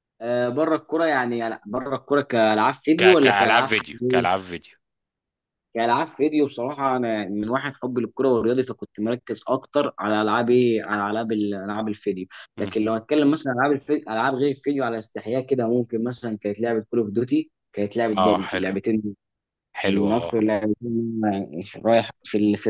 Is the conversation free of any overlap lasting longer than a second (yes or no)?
no